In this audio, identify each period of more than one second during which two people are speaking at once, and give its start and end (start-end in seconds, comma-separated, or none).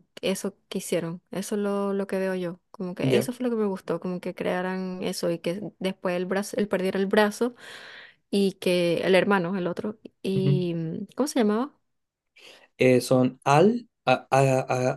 none